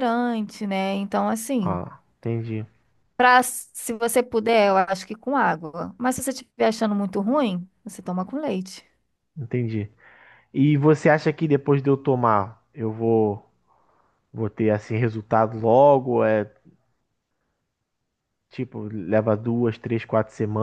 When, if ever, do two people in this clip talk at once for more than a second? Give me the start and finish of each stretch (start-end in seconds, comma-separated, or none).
none